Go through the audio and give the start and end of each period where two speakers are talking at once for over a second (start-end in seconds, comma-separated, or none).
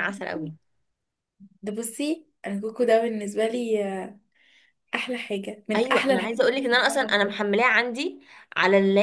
5.8-7.3